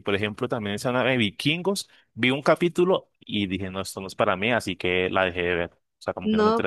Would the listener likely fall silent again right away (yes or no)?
no